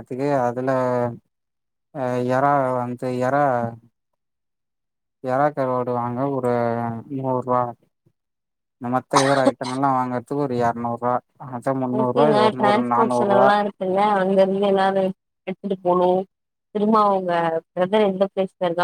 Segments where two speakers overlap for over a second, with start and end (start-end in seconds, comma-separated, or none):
12.0-13.5